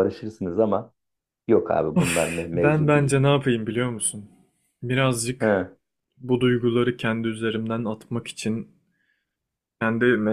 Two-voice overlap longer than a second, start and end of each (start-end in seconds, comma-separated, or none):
1.9-3.2